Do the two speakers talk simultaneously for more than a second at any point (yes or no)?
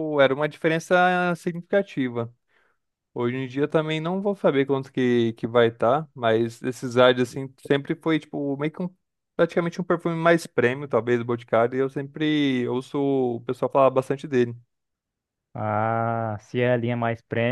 no